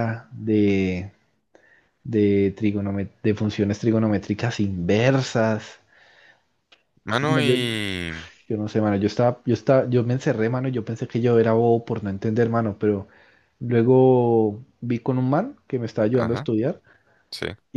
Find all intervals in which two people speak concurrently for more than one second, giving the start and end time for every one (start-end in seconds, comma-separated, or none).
none